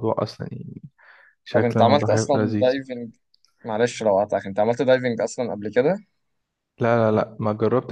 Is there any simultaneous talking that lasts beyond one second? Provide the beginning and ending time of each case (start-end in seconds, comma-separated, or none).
1.5-2.7